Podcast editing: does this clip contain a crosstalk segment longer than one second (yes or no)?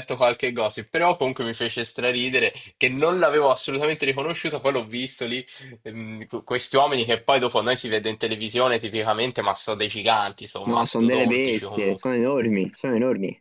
yes